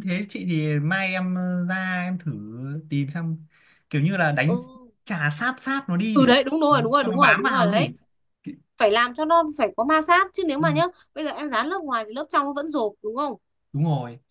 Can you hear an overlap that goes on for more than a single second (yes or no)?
yes